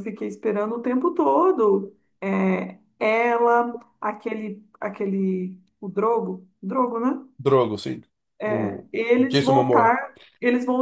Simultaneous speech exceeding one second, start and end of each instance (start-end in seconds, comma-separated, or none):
8.4-10.0